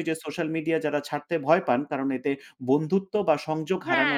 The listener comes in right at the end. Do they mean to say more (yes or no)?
yes